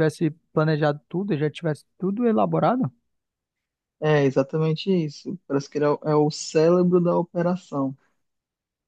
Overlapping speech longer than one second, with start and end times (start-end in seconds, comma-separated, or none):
none